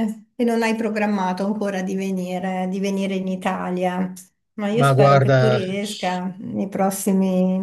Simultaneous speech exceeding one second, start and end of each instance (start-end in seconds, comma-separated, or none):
4.7-6.2